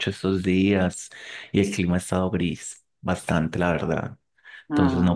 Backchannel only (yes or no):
yes